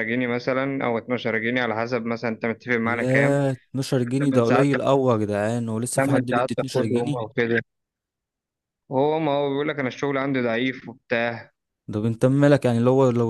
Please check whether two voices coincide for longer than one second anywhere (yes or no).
yes